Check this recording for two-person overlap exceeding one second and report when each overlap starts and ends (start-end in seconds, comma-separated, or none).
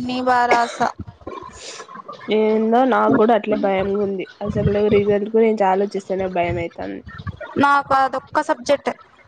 none